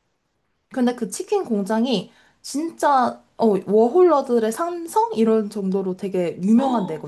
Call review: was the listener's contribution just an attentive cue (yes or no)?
no